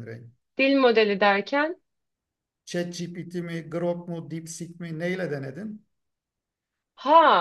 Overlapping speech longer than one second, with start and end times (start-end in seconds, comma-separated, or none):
none